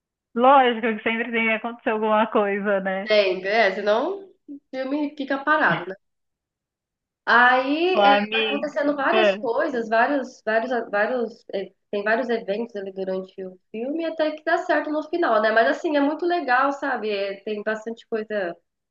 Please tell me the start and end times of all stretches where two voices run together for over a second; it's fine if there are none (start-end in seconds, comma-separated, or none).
7.9-9.4